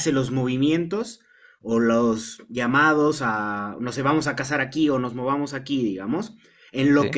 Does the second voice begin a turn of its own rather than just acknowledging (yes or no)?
no